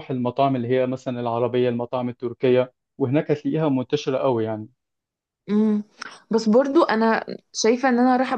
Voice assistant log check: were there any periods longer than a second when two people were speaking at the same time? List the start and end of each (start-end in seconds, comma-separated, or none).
none